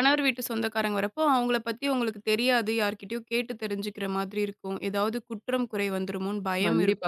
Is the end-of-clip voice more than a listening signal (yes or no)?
yes